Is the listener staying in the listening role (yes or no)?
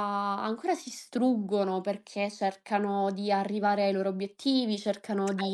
yes